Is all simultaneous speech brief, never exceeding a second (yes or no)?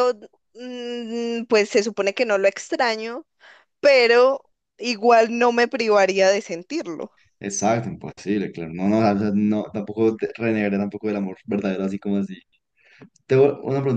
yes